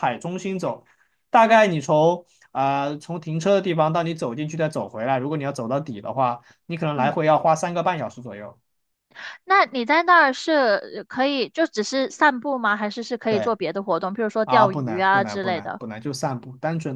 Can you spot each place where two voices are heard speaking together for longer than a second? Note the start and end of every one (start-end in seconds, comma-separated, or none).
14.4-15.8